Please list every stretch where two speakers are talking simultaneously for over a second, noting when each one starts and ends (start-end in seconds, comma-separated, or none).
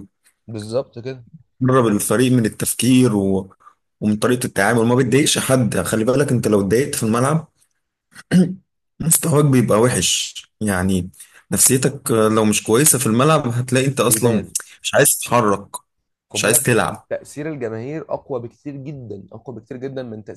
none